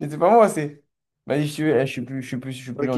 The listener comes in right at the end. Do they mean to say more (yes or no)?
yes